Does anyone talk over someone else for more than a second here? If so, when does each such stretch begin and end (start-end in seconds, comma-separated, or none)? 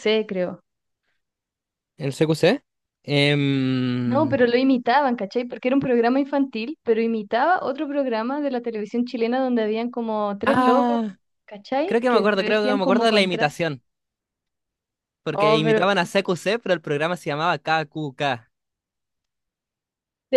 11.8-13.6